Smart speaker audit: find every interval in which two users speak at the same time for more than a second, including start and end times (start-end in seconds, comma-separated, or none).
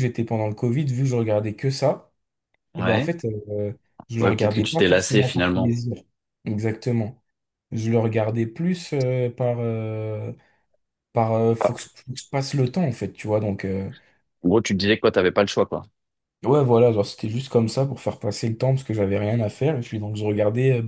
4.2-5.8